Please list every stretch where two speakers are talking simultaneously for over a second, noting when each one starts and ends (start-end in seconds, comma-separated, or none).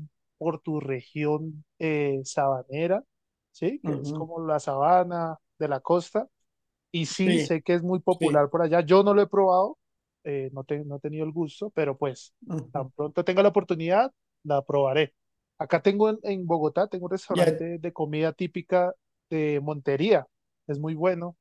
none